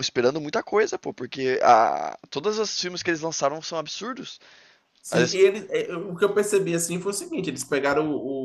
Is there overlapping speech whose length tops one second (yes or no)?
no